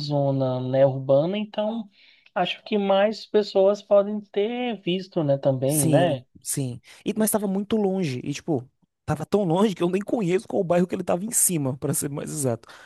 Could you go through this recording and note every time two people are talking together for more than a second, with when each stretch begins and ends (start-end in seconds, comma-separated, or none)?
none